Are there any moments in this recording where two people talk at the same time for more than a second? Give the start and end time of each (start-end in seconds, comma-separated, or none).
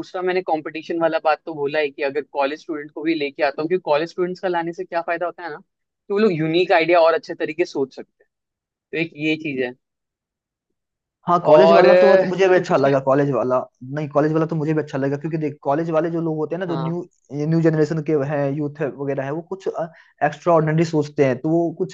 11.5-12.9